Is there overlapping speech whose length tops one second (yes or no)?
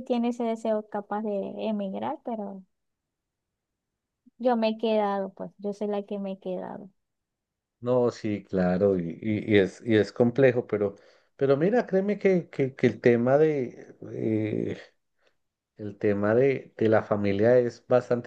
no